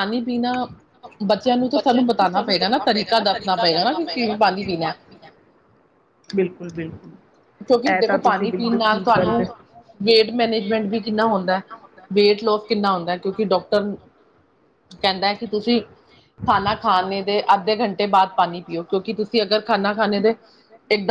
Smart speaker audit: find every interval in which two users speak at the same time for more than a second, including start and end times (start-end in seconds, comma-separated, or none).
7.9-9.4